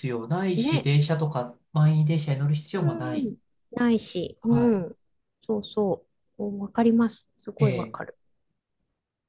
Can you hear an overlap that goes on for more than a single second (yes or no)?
no